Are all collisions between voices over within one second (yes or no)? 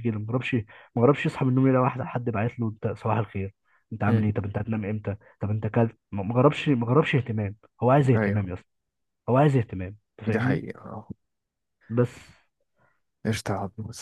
yes